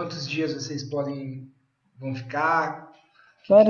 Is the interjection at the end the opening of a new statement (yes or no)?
yes